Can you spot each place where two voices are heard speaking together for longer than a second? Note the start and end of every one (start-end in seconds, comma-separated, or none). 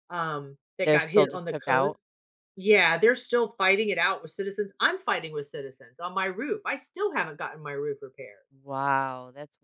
0.8-2.0